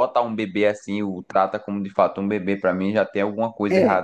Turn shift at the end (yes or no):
yes